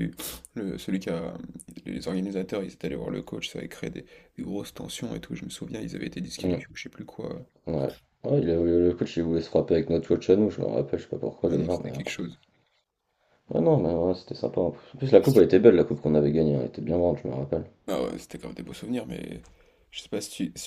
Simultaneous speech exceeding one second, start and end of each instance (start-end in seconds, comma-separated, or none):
none